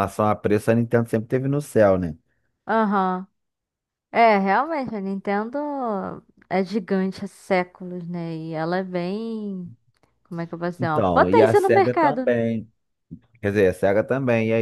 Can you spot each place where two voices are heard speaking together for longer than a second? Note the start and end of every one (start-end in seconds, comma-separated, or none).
10.8-12.4